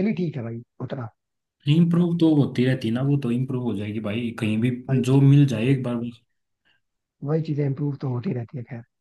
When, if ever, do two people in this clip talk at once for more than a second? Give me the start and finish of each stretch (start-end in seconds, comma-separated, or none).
none